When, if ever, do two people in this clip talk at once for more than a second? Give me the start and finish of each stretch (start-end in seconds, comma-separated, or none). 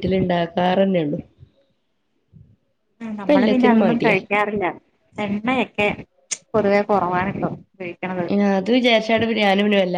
none